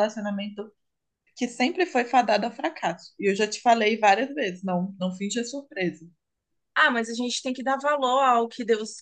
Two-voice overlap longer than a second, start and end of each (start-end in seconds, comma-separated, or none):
none